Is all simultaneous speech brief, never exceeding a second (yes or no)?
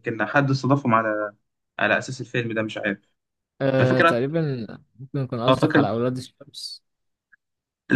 yes